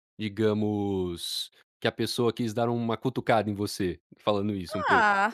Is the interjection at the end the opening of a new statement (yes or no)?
yes